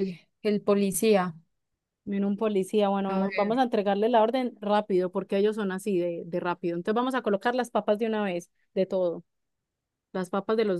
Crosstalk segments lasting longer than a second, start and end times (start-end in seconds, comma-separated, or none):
none